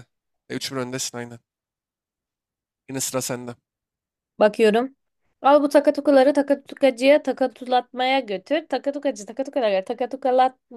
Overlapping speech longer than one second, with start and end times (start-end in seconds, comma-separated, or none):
none